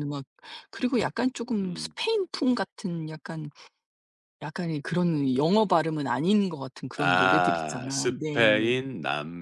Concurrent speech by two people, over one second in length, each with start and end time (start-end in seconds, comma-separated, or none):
7.0-8.6